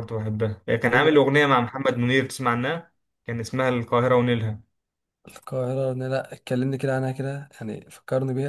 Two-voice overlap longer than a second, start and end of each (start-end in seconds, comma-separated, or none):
none